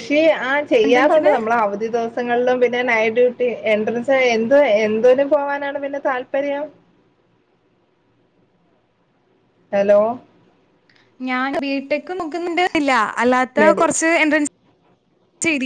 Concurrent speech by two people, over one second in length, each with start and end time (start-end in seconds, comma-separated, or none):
none